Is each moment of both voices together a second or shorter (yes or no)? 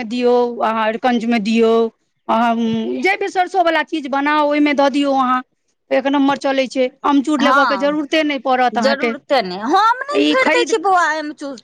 yes